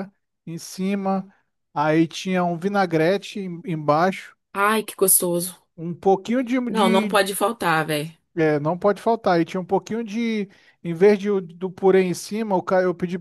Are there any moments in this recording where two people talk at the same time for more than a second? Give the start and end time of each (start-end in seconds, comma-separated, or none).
none